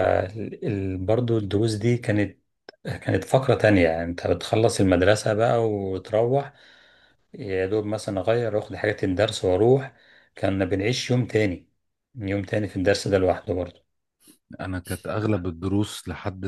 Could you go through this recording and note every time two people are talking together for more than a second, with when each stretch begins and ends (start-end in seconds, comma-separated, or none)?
none